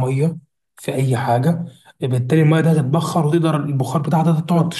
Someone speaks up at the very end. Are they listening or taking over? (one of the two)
taking over